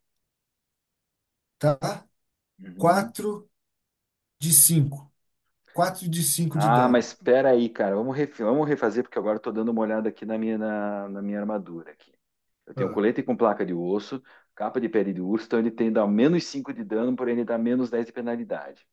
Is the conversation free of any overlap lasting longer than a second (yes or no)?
yes